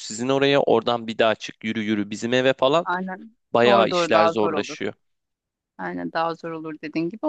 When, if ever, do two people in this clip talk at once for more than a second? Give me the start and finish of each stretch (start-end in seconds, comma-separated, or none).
3.5-4.8